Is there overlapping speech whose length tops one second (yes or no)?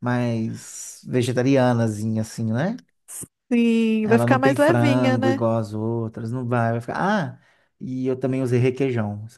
yes